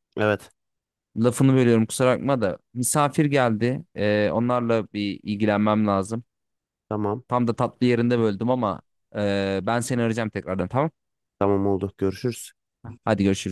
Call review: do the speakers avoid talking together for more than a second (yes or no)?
yes